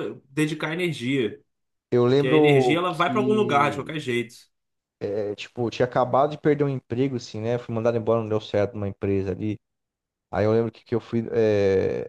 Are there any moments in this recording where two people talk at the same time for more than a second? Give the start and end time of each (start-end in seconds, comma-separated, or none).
2.2-3.9